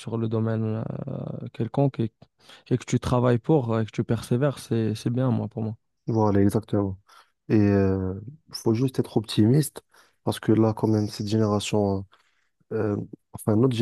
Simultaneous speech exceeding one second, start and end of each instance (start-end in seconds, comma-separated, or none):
none